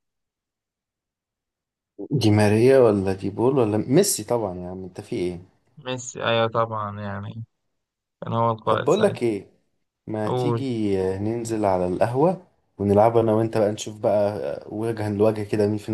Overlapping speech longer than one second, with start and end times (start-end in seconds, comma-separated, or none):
none